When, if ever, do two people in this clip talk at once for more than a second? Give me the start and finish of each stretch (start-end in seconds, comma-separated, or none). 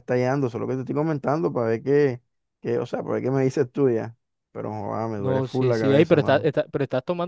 5.2-6.5